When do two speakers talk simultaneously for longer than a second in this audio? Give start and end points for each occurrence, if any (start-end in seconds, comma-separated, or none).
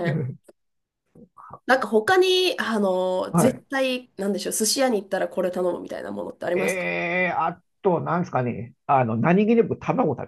none